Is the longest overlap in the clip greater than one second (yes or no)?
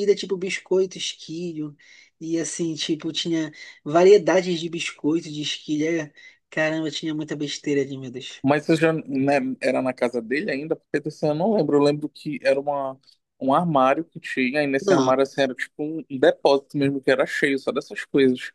no